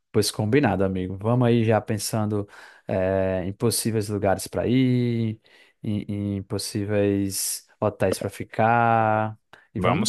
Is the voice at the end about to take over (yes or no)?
no